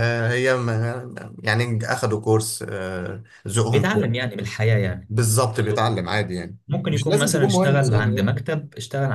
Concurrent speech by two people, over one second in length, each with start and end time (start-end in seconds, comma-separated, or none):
6.7-8.3